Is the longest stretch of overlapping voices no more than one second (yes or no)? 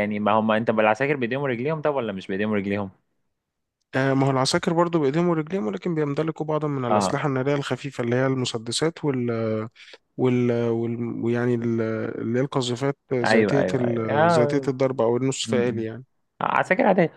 no